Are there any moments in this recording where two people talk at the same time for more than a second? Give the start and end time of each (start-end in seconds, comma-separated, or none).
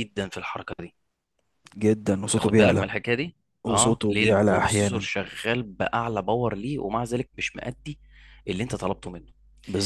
3.6-5.1